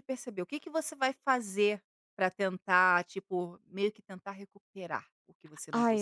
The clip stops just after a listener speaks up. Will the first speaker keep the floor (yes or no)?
no